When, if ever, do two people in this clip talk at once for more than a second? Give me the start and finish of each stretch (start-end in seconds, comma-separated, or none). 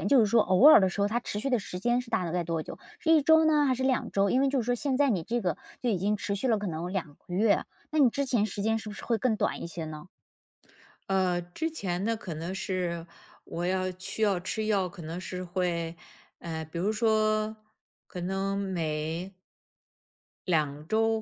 none